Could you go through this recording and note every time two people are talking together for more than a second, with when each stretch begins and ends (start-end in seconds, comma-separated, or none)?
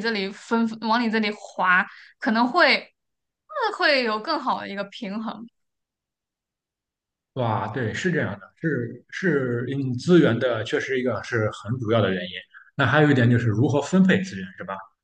none